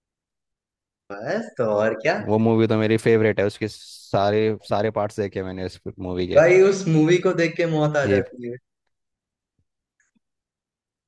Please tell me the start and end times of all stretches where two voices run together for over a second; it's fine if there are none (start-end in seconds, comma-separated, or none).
none